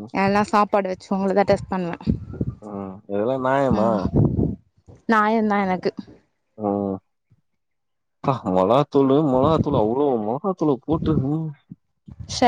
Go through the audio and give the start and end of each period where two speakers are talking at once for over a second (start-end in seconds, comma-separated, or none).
none